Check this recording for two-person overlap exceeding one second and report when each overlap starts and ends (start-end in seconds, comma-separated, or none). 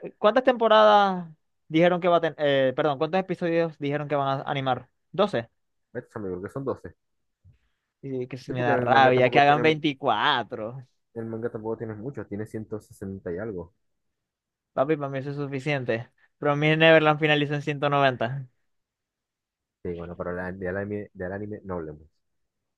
8.5-9.8